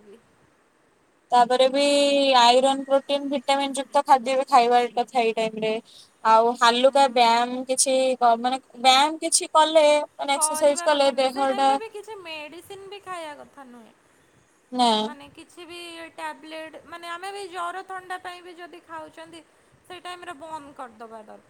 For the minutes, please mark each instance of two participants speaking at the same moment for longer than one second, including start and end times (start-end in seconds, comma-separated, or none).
10.3-11.7